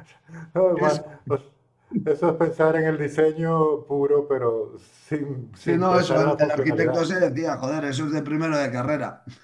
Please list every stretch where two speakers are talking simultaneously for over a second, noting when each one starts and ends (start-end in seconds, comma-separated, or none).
5.6-7.0